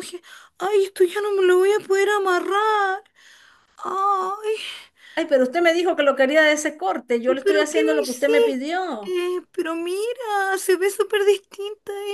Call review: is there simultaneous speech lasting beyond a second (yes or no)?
yes